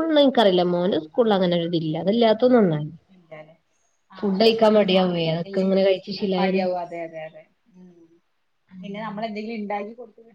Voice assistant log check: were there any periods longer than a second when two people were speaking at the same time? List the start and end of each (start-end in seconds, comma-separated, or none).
none